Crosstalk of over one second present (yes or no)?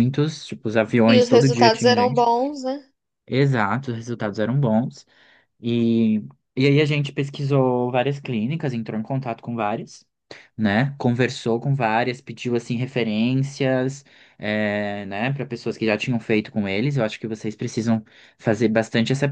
yes